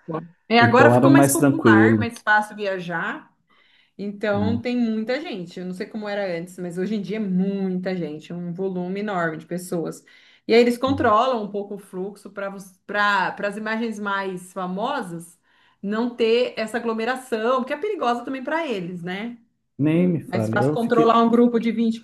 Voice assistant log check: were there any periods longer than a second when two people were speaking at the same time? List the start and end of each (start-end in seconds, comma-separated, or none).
0.6-2.1, 19.9-21.2